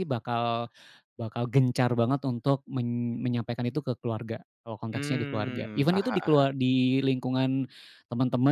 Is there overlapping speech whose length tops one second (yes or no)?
yes